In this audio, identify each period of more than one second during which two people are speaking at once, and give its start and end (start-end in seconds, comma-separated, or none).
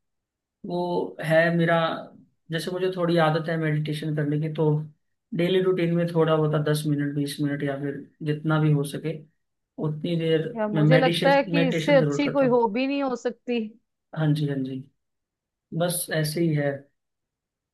10.5-12.6